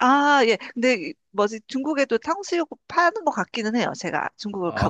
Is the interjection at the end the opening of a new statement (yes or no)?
yes